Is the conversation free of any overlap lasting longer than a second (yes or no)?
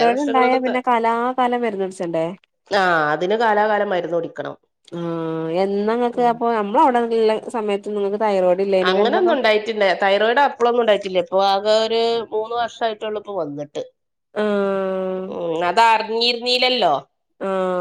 yes